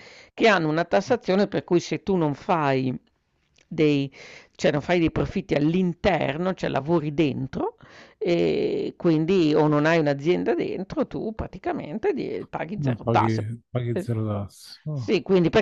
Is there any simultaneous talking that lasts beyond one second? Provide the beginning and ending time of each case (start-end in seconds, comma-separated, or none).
none